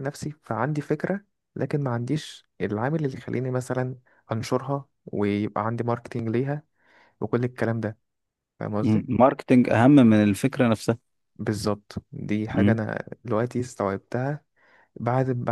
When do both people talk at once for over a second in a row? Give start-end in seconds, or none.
none